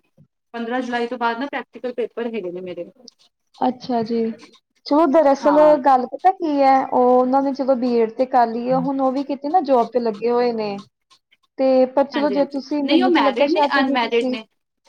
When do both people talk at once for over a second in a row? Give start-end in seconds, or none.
12.1-14.4